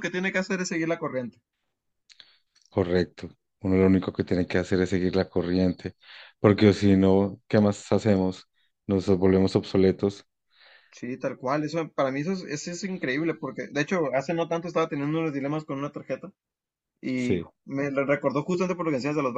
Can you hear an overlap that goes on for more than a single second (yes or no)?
no